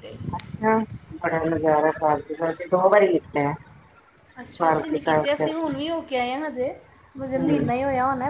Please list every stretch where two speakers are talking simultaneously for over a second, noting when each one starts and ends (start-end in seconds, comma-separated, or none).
none